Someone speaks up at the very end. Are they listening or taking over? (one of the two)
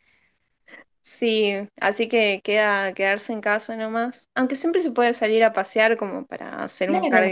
taking over